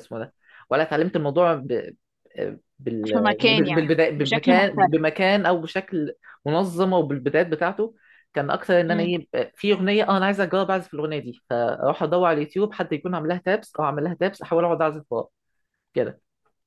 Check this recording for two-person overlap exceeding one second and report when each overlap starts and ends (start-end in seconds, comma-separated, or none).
3.0-5.0